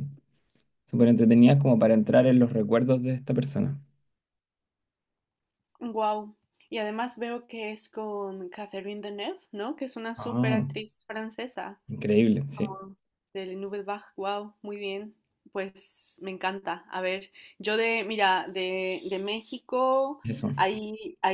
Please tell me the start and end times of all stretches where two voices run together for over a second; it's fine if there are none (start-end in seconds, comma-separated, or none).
none